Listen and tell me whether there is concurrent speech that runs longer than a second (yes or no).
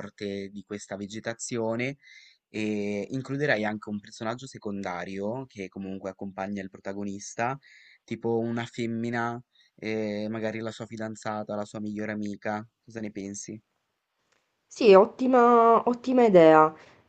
no